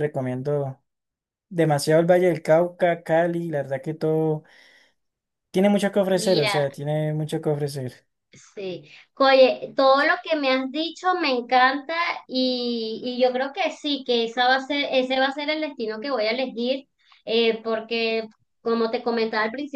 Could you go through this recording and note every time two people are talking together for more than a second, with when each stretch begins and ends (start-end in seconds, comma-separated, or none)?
none